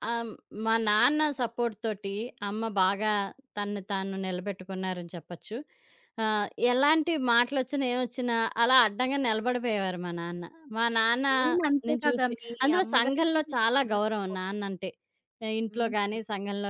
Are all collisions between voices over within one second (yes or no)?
no